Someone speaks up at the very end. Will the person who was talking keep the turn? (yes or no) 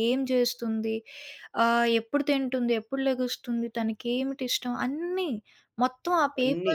yes